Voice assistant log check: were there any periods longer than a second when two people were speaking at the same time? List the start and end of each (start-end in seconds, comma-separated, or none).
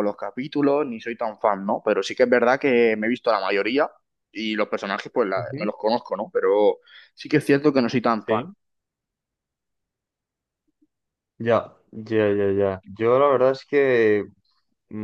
none